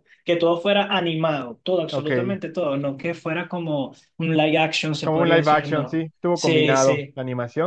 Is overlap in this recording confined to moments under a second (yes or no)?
no